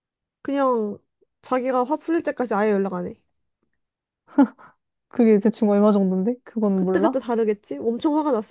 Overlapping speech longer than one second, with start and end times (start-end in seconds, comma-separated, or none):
none